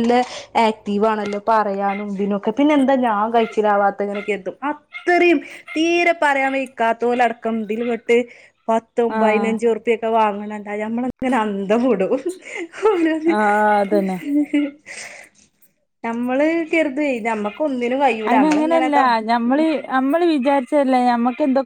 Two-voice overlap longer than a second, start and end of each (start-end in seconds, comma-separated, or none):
none